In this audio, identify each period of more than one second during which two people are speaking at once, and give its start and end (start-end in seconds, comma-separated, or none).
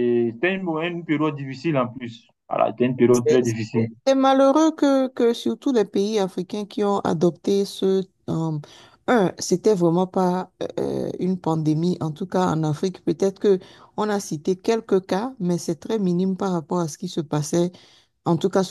none